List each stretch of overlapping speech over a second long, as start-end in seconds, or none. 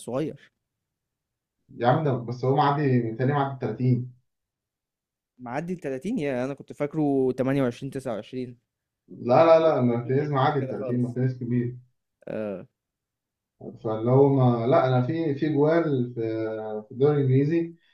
9.4-11.2